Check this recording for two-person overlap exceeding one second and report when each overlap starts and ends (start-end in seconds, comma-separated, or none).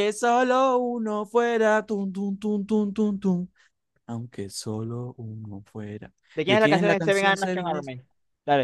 6.3-7.9